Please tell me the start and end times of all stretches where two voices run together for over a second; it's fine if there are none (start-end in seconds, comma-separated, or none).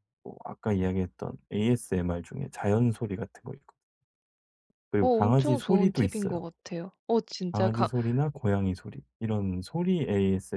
5.0-6.5